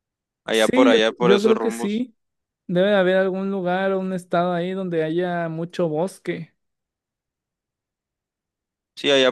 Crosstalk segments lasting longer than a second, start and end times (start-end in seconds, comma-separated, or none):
0.5-2.0